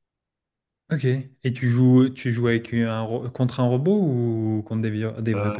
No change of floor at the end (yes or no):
no